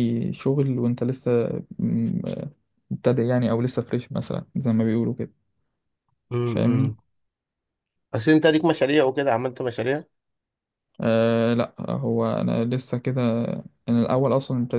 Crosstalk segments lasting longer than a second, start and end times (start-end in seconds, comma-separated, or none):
none